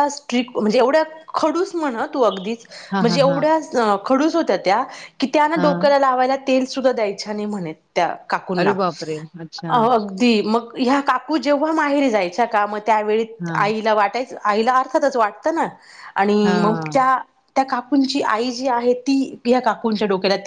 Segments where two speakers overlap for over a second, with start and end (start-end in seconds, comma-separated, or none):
none